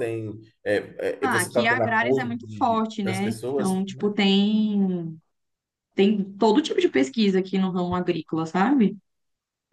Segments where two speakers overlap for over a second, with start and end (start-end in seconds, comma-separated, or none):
1.2-4.1